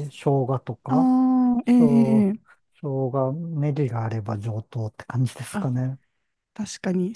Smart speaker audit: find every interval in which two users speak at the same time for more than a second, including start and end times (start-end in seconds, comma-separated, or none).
none